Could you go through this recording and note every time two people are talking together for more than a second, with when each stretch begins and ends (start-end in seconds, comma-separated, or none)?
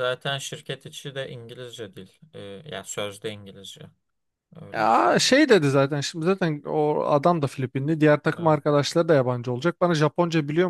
none